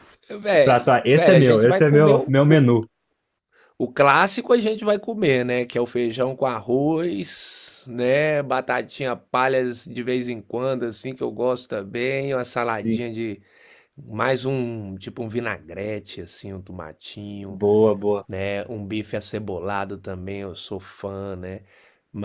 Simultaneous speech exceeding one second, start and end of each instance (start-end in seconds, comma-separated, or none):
0.6-2.6